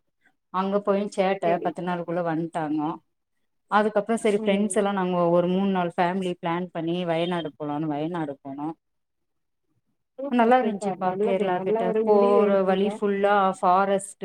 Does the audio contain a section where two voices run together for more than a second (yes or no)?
yes